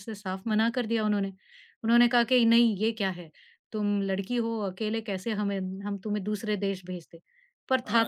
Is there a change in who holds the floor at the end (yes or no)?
yes